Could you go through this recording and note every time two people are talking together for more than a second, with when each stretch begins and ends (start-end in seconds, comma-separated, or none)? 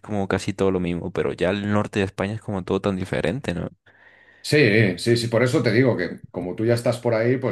none